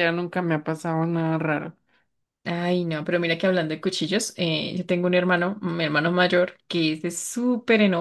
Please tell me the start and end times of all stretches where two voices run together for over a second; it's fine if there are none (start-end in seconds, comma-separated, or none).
none